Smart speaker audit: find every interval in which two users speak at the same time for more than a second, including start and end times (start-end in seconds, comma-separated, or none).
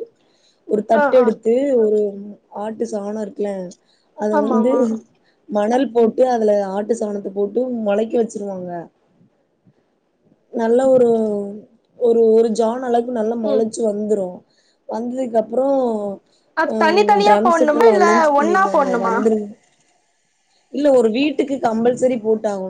16.7-19.1